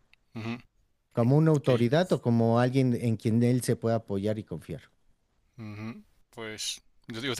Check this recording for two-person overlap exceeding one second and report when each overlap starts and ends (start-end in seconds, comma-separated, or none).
none